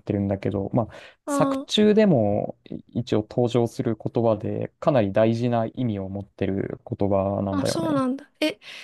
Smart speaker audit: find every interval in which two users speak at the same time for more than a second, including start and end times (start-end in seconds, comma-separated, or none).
none